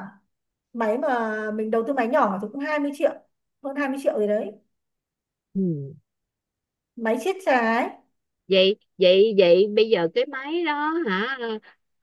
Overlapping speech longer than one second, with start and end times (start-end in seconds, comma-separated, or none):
none